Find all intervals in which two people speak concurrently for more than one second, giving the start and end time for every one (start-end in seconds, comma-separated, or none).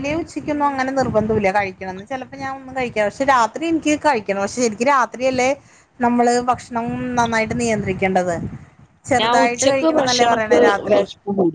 9.2-11.0